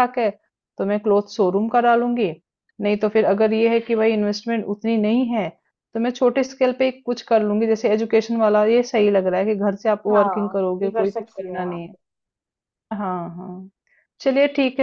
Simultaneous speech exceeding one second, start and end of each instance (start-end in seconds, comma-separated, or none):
10.1-11.9